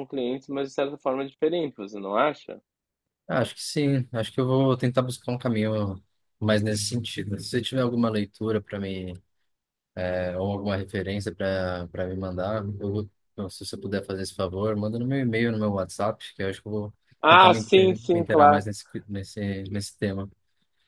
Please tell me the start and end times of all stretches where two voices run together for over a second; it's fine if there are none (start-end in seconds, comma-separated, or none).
17.2-18.7